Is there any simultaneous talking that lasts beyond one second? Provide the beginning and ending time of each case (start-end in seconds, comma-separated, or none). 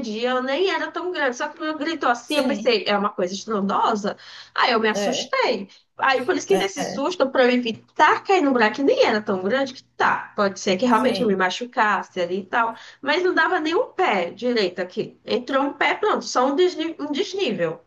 none